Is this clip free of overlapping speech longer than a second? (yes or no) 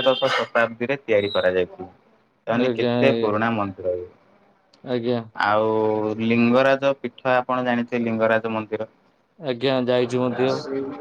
yes